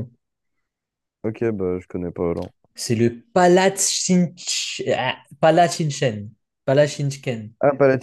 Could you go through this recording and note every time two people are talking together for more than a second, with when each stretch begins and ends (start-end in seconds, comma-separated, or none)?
none